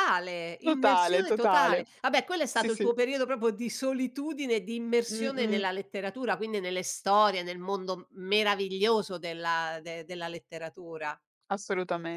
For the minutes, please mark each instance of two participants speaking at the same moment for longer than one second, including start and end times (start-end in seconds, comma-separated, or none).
0.6-1.9